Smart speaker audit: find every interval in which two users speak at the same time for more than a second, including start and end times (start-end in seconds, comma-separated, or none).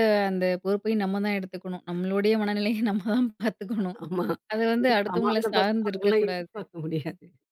4.8-6.6